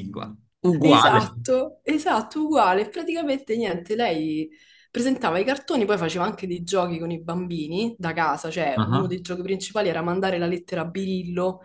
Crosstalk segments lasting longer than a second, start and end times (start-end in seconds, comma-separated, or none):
none